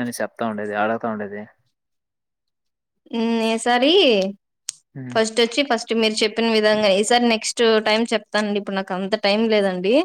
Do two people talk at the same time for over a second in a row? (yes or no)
no